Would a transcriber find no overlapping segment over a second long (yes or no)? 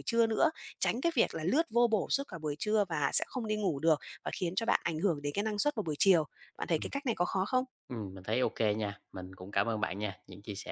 yes